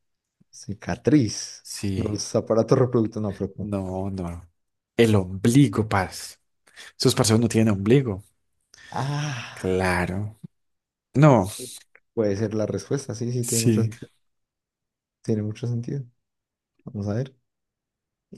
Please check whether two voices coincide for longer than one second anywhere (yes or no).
no